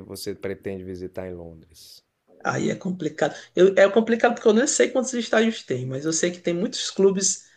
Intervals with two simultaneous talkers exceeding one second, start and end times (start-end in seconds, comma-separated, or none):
none